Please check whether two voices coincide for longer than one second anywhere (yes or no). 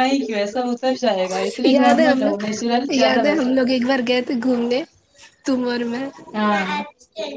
yes